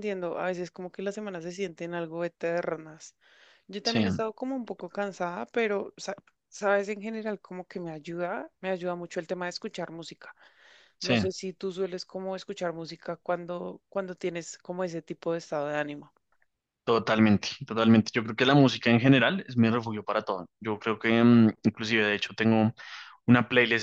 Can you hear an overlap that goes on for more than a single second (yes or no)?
no